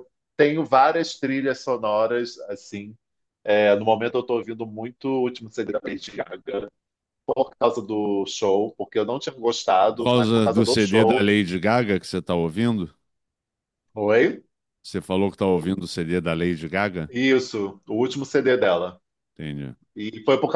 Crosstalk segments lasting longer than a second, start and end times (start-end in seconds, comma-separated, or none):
9.9-11.3